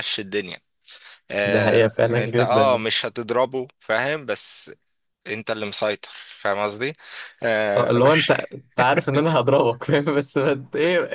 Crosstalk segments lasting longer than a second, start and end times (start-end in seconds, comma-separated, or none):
1.4-2.8